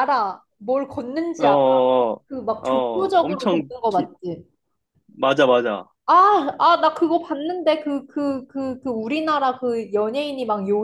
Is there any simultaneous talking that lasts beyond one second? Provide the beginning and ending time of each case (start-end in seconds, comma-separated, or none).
2.6-4.1